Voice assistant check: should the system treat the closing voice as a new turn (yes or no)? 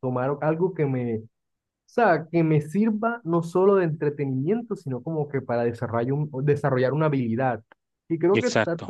no